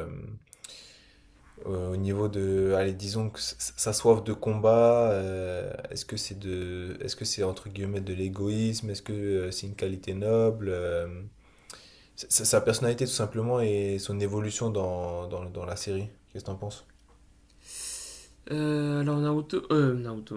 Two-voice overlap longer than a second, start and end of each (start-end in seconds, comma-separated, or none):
none